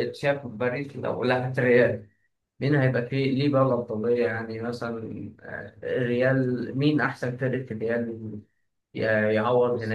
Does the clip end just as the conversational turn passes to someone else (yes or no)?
no